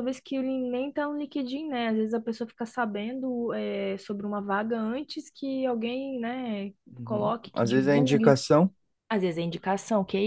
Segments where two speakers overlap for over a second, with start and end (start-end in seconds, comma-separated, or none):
7.0-8.4